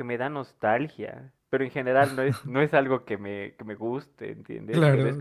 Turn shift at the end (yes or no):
no